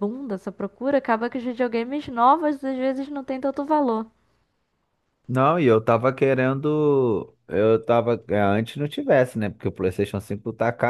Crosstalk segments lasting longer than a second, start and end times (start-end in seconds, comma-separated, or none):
none